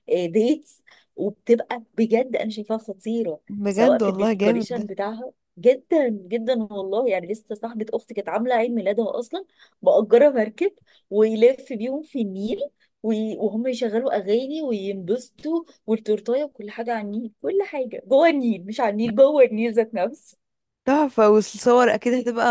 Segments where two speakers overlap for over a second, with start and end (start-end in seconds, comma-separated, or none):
3.5-4.9